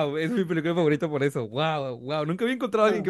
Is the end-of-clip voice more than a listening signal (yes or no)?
no